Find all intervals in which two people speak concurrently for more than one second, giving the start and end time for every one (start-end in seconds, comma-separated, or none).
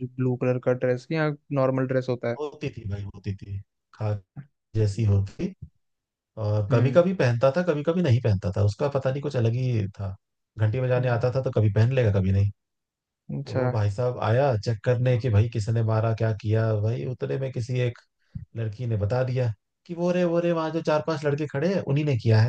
none